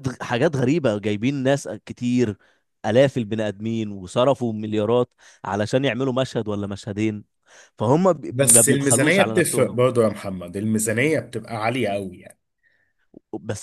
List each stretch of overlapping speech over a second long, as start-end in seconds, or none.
8.3-9.8